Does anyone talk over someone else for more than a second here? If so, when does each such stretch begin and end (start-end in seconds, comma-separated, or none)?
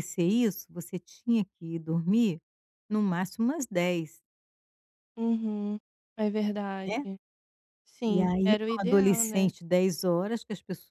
8.0-9.5